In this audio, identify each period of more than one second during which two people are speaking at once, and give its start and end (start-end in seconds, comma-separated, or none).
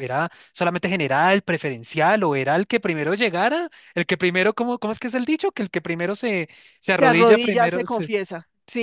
6.9-8.1